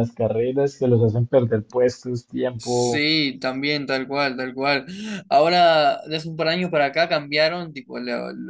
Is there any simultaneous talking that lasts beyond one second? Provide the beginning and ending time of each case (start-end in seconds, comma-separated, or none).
none